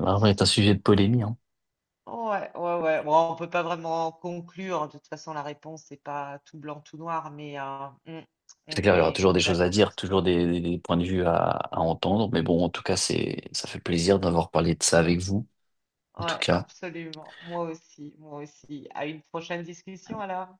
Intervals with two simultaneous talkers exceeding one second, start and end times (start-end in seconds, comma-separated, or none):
8.7-10.3